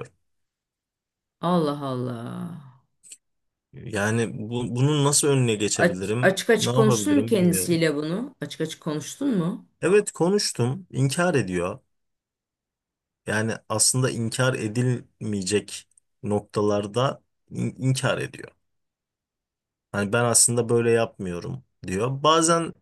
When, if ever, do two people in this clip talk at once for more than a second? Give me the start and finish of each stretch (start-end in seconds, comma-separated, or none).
5.8-7.8